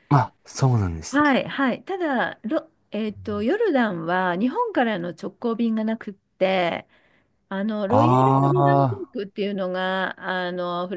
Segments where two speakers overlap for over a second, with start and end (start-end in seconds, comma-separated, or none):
7.9-9.2